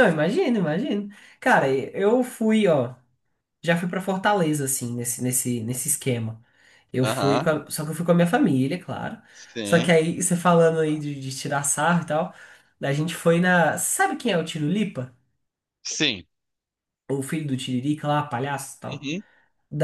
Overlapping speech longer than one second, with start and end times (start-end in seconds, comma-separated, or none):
none